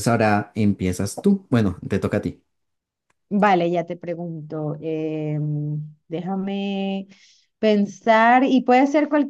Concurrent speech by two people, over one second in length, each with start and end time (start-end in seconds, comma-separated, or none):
none